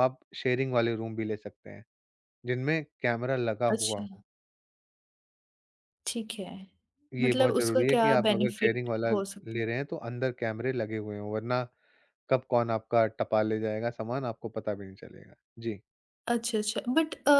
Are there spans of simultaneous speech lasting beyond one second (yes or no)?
yes